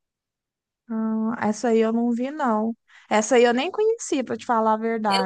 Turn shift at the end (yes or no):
yes